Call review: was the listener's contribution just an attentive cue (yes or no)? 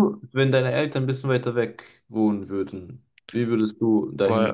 no